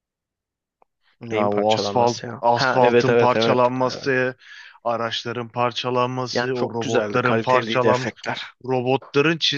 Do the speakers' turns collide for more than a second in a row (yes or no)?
yes